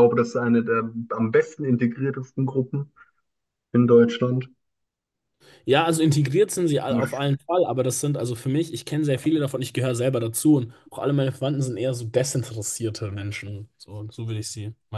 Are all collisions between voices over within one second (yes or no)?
yes